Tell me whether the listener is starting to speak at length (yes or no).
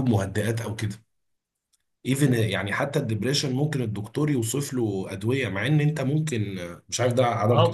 yes